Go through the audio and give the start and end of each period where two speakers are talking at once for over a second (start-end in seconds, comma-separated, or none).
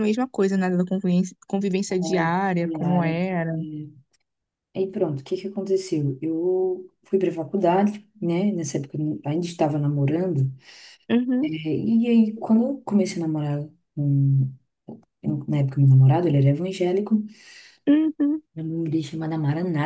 1.9-3.6